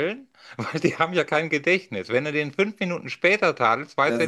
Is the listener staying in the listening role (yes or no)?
no